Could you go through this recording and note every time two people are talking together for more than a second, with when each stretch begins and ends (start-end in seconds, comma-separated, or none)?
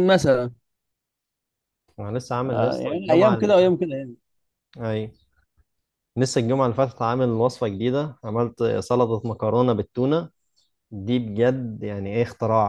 2.5-3.8